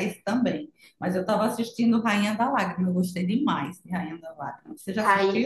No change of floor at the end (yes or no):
no